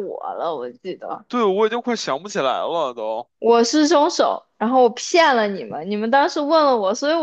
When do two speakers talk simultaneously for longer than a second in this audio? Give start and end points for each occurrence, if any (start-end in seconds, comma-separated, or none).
none